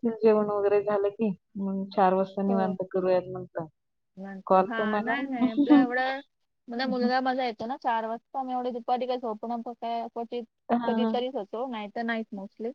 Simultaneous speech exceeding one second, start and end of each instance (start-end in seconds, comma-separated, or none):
none